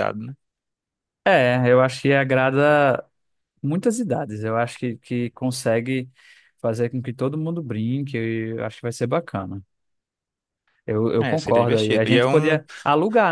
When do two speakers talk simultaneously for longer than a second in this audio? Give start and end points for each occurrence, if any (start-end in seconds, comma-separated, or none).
11.2-12.5